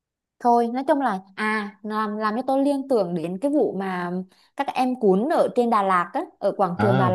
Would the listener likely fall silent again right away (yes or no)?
no